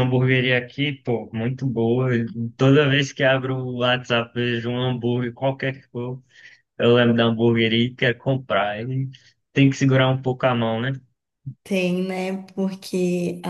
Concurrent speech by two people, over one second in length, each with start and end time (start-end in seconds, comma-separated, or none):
none